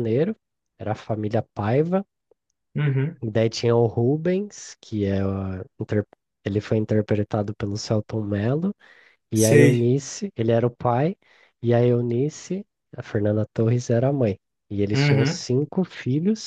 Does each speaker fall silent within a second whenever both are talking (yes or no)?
yes